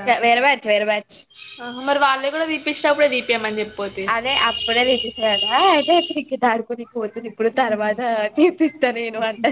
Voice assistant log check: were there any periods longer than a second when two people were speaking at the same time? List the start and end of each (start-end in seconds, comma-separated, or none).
none